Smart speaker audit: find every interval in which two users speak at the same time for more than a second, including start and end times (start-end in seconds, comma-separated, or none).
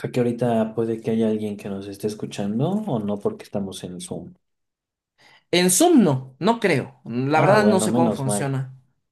7.3-8.6